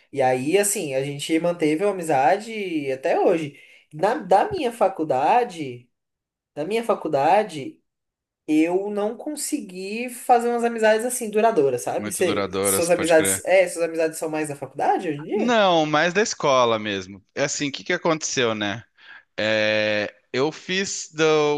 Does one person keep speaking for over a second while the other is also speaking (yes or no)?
yes